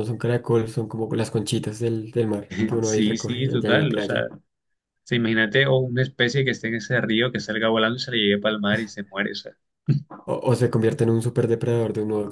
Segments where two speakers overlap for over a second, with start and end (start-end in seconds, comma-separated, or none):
2.8-4.2